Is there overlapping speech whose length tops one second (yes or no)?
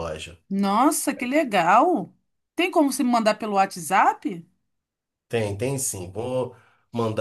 no